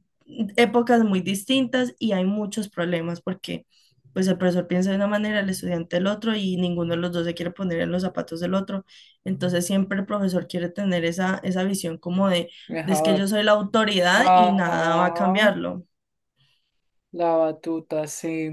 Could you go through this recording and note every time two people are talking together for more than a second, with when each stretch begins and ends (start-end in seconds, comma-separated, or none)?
14.2-15.6